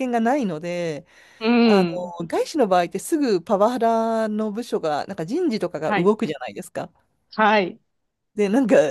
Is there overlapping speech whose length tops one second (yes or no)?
no